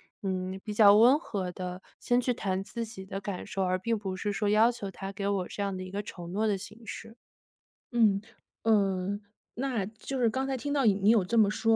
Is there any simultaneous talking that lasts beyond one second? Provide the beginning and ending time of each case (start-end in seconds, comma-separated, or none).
none